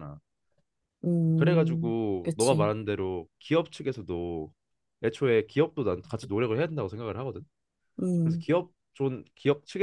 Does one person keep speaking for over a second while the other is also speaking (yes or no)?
yes